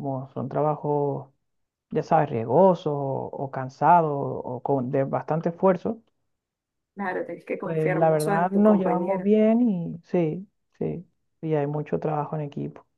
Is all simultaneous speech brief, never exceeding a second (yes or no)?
no